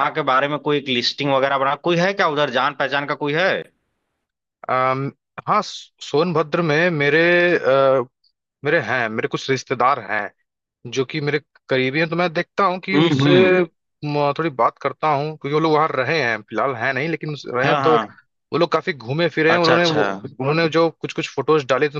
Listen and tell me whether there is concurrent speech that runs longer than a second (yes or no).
no